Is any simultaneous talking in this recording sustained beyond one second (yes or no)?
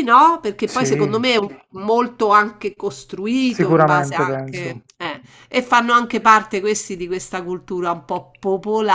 yes